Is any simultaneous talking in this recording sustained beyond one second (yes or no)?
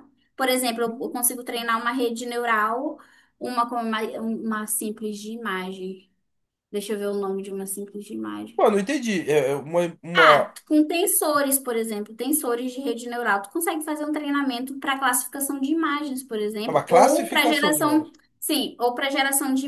yes